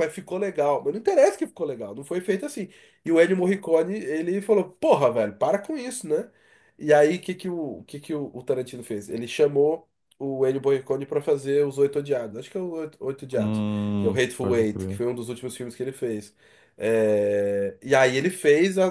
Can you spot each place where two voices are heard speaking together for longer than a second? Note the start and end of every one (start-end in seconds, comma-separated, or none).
13.3-15.0